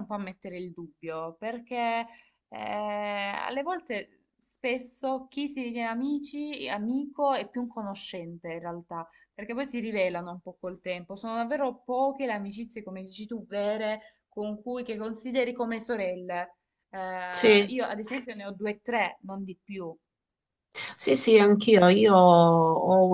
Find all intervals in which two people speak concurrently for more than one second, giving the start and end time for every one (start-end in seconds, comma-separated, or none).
none